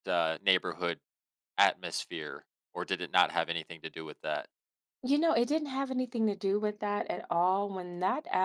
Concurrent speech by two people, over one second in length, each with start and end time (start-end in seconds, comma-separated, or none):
none